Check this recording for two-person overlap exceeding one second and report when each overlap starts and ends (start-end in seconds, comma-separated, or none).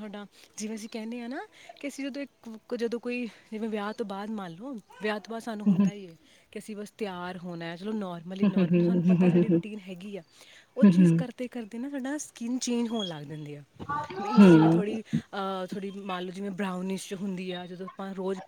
8.4-9.6